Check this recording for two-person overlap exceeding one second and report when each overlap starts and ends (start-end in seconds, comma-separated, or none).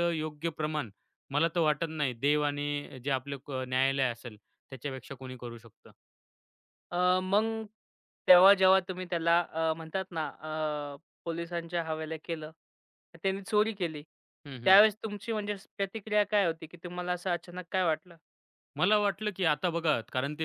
none